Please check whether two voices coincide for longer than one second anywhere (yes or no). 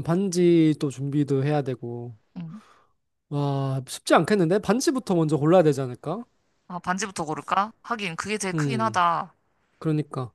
no